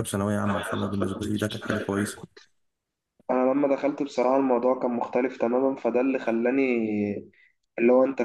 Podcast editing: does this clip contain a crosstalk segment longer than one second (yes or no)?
no